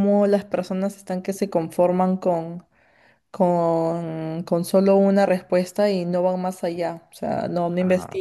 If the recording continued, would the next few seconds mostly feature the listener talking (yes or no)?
no